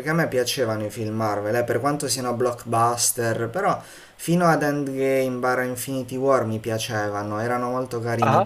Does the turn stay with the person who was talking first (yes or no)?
yes